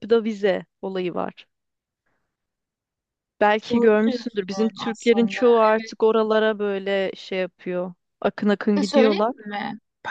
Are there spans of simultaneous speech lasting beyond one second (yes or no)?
yes